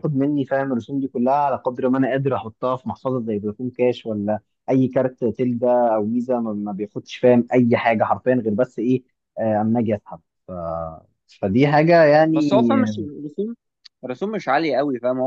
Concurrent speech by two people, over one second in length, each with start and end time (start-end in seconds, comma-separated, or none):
none